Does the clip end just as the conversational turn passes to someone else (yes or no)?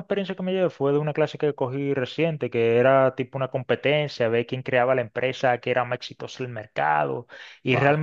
no